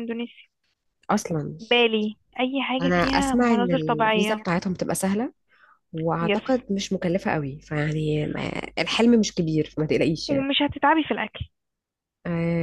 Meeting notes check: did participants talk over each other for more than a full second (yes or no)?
yes